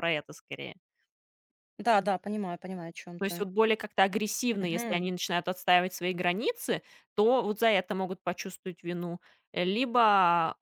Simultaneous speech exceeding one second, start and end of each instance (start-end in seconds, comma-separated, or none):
none